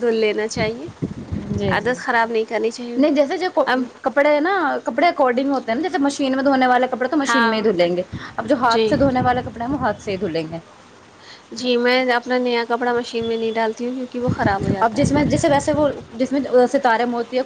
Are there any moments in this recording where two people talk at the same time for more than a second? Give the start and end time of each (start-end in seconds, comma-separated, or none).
none